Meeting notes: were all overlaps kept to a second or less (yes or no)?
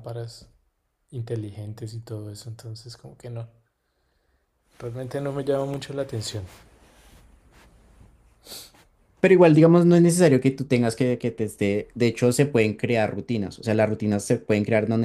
yes